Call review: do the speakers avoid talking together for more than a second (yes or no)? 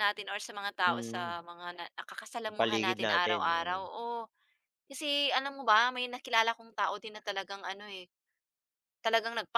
no